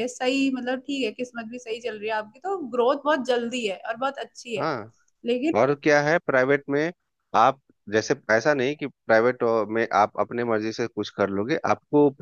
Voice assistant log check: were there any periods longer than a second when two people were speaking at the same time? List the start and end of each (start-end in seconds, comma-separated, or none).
none